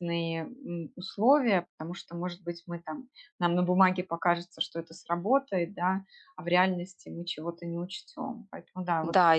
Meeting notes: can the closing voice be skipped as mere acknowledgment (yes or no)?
no